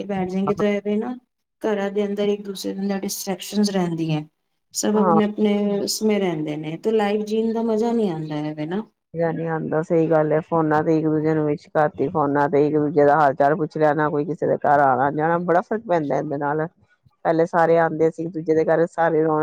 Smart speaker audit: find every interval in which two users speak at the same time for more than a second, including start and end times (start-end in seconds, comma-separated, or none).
none